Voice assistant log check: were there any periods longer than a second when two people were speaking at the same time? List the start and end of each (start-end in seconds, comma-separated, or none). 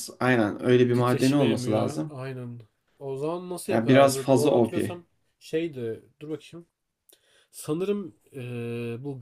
0.9-2.1, 3.7-5.0